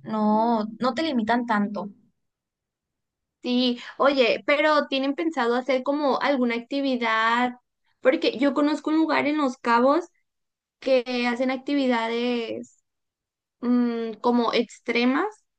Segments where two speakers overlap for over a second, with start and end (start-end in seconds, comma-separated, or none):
none